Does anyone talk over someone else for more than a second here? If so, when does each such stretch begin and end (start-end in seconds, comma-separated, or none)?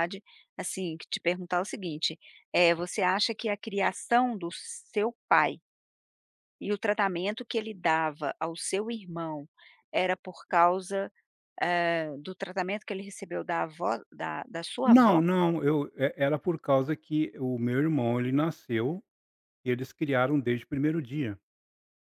none